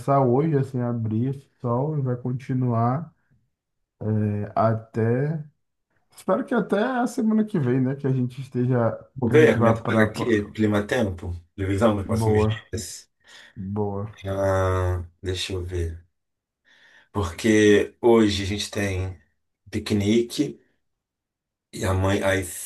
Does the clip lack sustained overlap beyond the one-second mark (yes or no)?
no